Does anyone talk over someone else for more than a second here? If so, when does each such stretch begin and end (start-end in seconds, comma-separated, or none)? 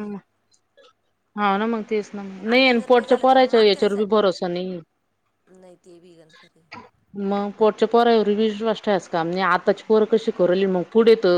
2.4-4.3